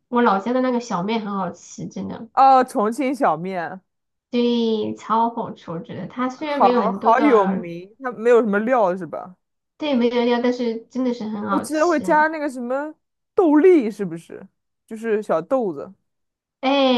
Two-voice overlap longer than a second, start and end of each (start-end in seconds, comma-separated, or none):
6.3-7.7